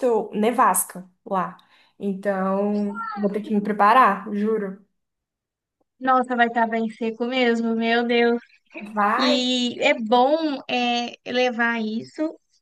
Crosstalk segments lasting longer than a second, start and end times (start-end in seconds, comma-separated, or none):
none